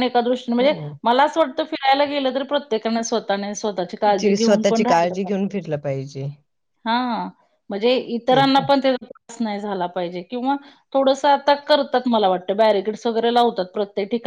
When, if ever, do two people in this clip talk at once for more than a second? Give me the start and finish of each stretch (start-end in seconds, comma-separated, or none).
none